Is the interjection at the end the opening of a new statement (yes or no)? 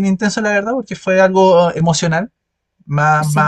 no